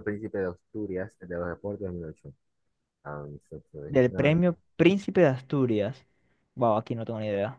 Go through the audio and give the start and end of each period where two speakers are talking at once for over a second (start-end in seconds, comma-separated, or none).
none